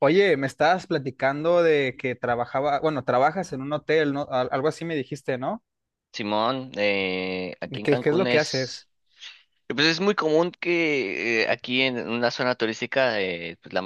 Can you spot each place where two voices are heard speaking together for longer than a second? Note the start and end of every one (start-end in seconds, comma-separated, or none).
7.6-8.9